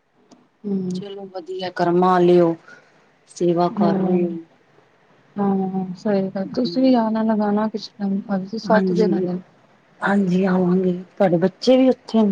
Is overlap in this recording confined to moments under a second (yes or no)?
yes